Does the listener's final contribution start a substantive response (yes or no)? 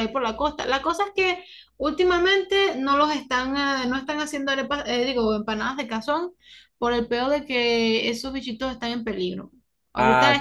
no